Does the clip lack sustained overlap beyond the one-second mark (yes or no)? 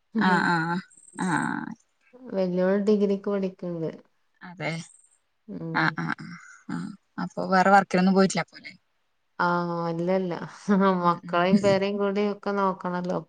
yes